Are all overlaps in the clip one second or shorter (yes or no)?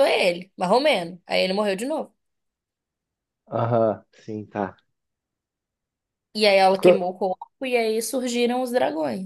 yes